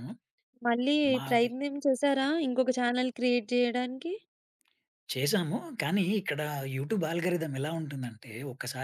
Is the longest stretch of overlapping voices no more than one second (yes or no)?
yes